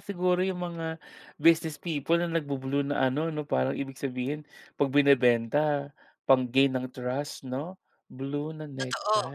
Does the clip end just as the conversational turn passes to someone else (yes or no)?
yes